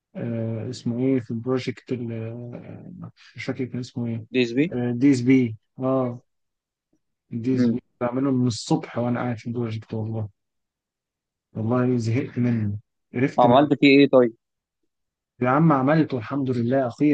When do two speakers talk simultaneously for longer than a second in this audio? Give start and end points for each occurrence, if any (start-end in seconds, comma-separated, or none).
none